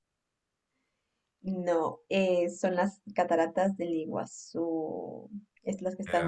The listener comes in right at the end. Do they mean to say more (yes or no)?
no